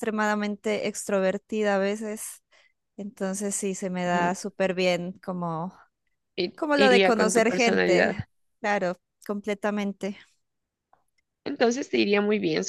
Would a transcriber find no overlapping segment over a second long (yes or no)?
no